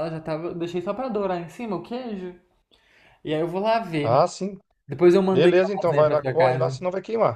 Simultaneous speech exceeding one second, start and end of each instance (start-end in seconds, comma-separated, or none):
5.3-6.8